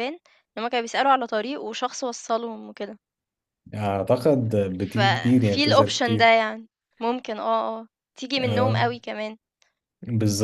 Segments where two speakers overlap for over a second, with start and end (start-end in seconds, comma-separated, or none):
4.9-6.3